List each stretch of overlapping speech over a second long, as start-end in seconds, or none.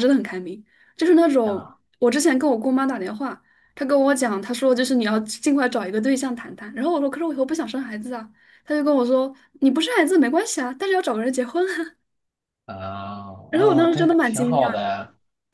13.5-14.9